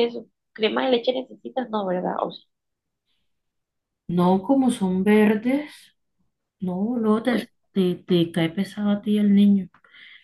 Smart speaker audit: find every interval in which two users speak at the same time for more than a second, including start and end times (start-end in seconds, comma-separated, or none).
none